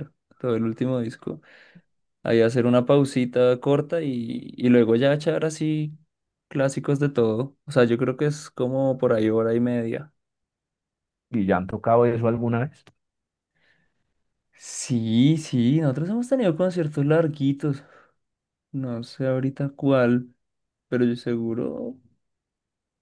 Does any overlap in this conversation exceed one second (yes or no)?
no